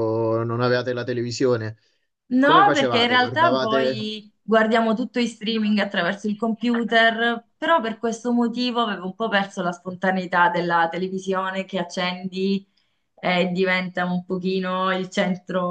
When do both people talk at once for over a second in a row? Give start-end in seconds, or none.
2.4-4.1